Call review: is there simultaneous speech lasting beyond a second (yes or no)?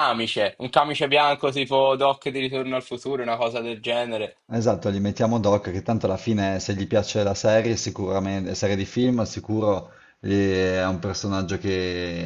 no